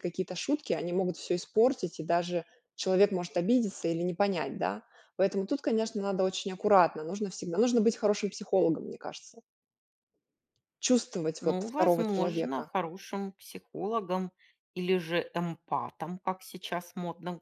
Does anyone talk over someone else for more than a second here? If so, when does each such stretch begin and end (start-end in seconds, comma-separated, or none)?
11.4-12.7